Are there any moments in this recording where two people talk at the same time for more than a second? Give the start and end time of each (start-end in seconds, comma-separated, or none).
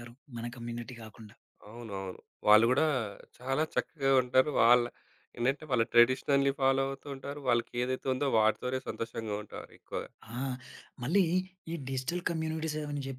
none